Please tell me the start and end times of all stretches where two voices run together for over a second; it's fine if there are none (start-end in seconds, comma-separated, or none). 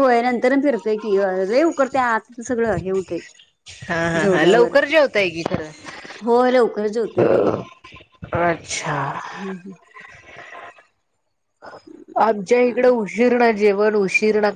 none